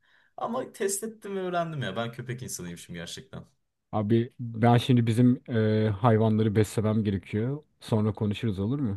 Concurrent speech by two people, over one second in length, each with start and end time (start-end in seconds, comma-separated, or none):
none